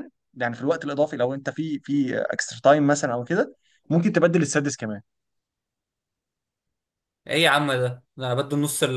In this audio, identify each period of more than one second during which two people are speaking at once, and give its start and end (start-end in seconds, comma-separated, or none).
none